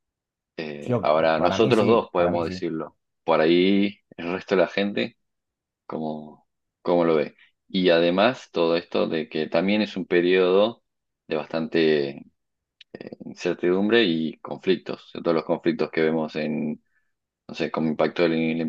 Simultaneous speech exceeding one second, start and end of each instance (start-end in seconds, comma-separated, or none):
0.9-2.6